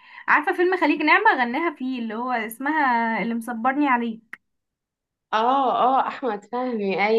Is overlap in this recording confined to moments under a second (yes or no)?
yes